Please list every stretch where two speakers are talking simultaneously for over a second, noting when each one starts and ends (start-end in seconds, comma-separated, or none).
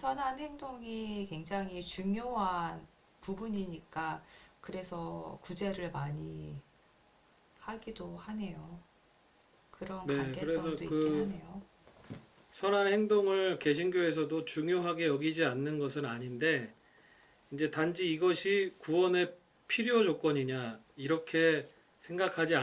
10.0-11.3